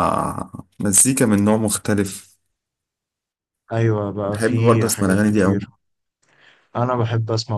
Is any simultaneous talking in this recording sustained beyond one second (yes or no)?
yes